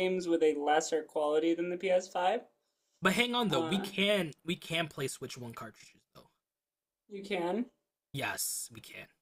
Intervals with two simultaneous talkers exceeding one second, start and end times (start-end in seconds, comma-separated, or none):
none